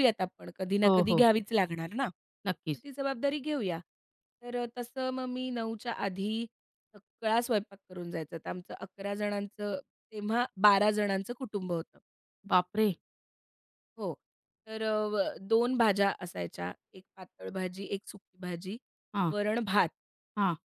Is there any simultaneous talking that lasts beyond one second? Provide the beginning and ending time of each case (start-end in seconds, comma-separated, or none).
none